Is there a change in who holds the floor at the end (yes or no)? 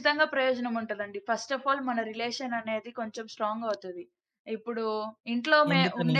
no